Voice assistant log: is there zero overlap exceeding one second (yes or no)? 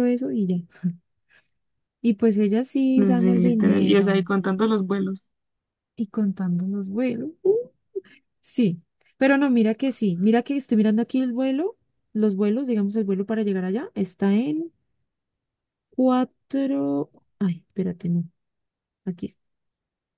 no